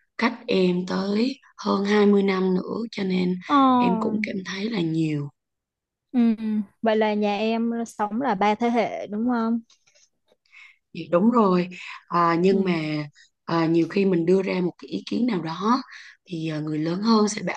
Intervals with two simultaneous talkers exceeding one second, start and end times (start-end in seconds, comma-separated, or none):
none